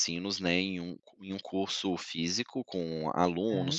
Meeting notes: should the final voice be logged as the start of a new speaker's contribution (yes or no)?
no